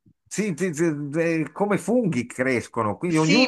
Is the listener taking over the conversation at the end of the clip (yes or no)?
no